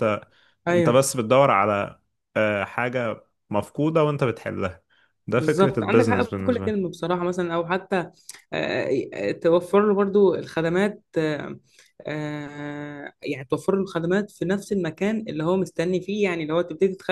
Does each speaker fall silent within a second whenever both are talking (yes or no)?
no